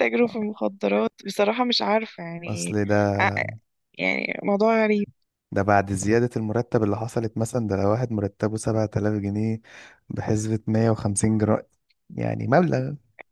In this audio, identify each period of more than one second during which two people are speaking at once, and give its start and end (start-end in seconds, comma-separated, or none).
none